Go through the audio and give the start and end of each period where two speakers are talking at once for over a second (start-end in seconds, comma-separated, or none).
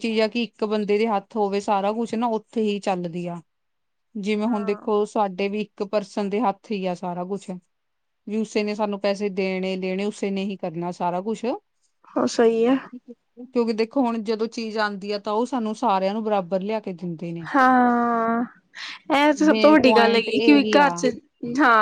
19.5-21.0